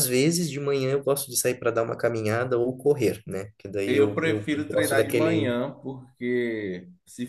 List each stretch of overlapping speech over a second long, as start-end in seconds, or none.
3.9-5.5